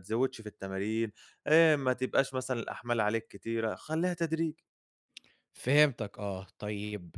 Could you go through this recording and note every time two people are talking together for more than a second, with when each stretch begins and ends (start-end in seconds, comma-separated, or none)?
none